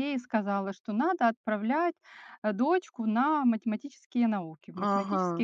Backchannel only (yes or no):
no